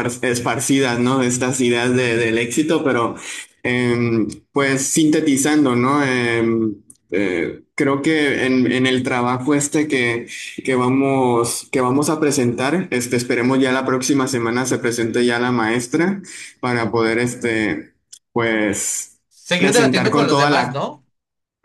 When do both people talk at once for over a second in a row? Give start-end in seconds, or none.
19.6-20.8